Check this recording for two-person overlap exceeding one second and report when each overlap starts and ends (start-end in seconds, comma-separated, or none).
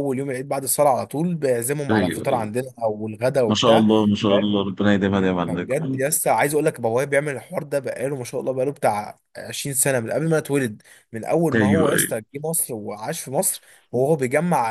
none